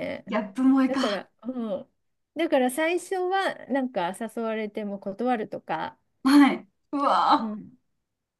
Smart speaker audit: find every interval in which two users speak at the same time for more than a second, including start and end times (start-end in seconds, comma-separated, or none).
none